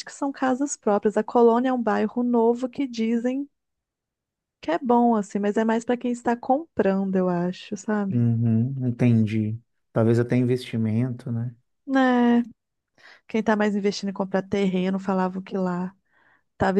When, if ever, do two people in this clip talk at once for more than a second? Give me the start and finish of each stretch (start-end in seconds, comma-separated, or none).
none